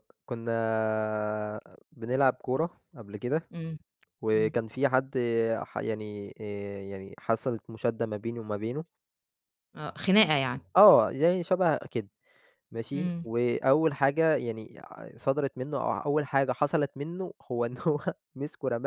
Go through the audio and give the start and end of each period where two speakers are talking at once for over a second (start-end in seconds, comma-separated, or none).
none